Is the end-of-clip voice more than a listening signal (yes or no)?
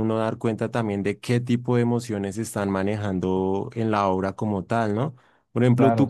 no